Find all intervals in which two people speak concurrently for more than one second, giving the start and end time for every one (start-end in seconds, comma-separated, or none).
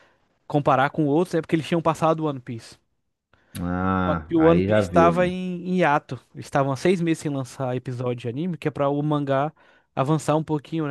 4.1-5.3